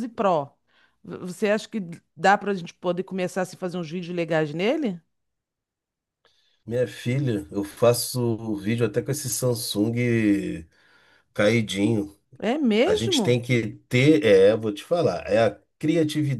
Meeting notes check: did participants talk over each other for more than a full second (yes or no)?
no